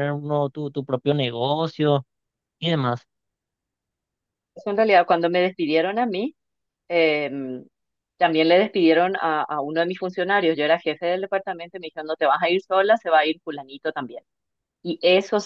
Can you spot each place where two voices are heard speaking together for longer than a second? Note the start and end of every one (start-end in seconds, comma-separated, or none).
none